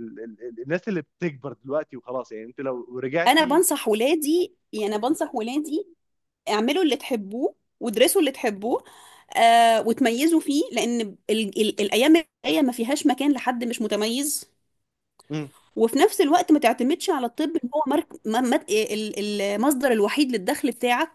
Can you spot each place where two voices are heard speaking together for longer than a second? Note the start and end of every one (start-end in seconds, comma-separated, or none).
none